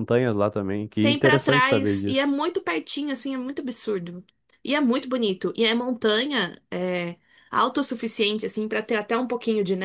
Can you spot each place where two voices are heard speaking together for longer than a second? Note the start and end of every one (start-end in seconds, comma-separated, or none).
1.0-2.3